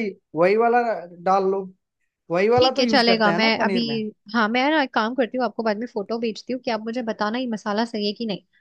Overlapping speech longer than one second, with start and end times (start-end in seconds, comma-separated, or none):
2.6-3.8